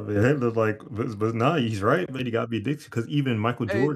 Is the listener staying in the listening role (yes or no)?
yes